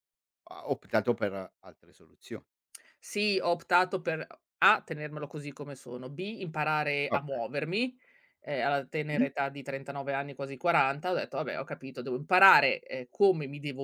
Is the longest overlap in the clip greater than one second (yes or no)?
no